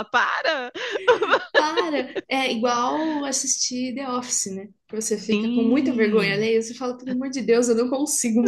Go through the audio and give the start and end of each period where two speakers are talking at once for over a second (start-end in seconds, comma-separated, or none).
5.3-6.5